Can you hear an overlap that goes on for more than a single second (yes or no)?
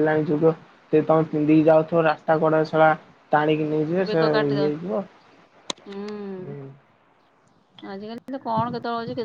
no